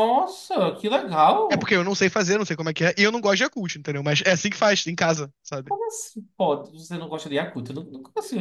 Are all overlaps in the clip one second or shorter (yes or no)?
yes